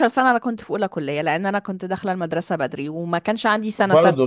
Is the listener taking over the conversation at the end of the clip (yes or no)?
yes